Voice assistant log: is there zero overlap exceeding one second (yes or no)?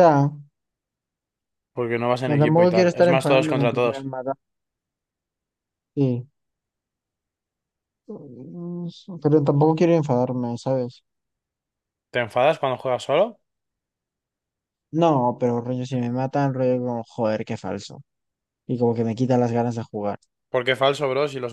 no